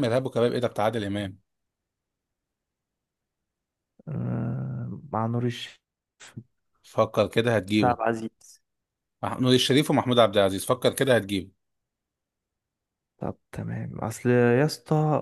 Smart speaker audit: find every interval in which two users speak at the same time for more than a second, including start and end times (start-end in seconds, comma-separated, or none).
none